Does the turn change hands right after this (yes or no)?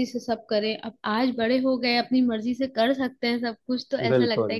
no